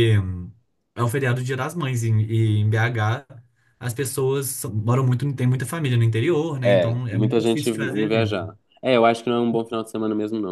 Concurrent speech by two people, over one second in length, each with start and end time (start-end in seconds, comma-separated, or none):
6.6-8.4